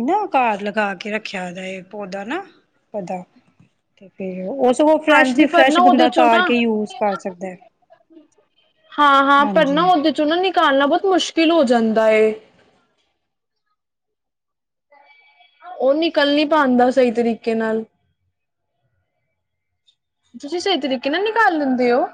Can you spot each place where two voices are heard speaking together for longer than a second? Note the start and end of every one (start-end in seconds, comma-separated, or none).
5.1-6.5